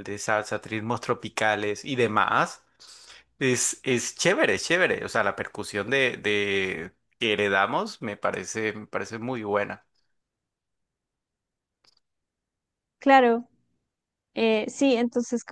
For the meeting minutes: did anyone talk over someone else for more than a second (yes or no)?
no